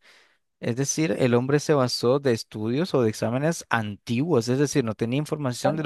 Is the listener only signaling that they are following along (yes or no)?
yes